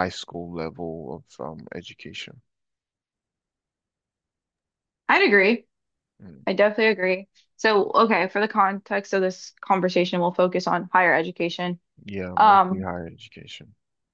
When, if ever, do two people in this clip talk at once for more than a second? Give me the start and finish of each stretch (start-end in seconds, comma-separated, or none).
none